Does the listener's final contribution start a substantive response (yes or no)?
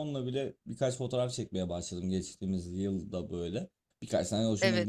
no